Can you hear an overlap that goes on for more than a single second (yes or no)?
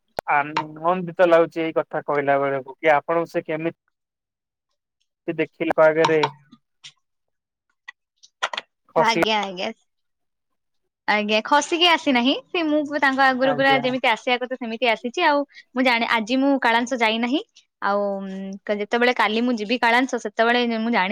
no